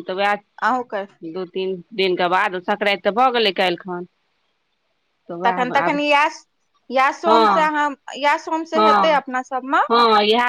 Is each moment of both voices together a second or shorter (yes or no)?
yes